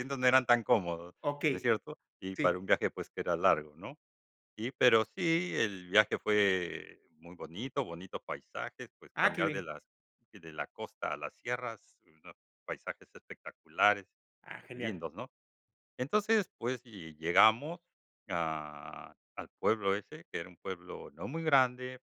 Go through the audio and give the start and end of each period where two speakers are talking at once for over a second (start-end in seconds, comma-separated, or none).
none